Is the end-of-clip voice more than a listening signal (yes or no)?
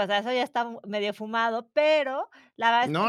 yes